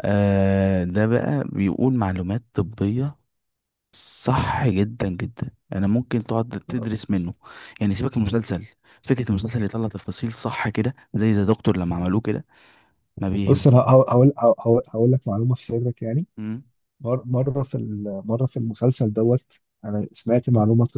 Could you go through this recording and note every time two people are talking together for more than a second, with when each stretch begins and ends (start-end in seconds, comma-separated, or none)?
none